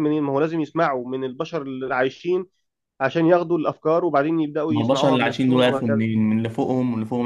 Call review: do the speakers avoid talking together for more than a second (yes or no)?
no